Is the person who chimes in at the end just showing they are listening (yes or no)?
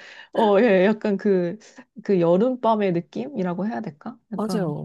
no